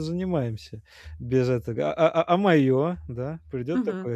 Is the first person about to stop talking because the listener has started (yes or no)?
yes